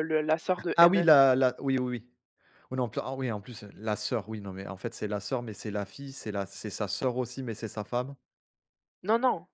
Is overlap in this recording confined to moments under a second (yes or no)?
yes